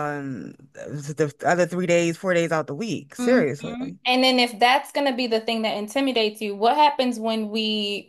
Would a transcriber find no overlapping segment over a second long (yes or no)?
yes